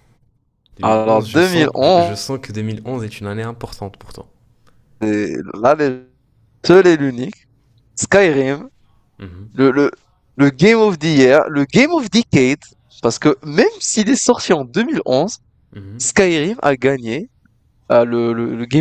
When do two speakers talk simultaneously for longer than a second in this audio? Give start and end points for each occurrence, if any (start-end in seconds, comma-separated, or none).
0.8-2.2